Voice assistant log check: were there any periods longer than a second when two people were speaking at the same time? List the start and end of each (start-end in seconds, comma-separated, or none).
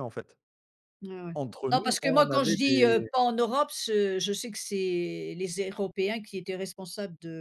1.7-3.1